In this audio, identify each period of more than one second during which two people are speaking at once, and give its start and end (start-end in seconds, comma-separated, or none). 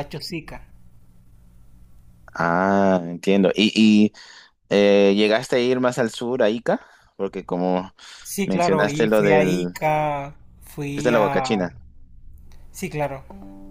8.4-9.8